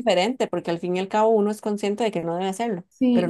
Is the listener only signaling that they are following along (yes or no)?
no